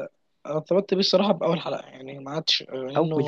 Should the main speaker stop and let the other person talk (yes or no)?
no